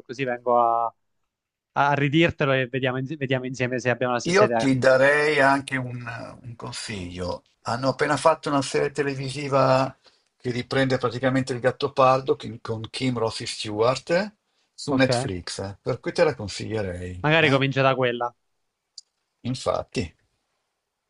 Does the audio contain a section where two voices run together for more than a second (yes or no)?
no